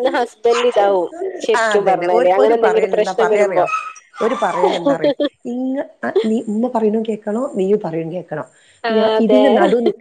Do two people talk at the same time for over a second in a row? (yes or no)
yes